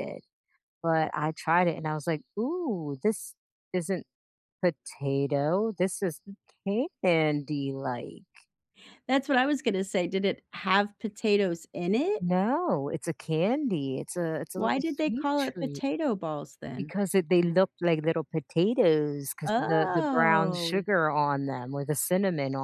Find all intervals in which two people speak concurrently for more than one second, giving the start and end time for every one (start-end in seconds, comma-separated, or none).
14.6-15.8, 19.5-20.9